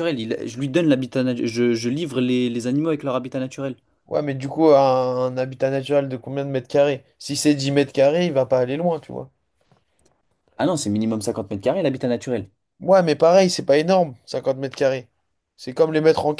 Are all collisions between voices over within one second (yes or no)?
yes